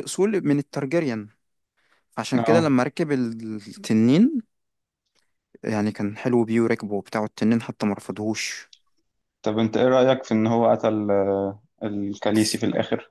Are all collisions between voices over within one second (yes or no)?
yes